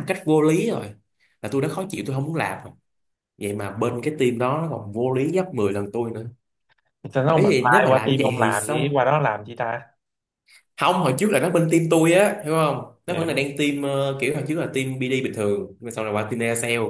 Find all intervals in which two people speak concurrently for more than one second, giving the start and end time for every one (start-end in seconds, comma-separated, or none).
7.3-9.0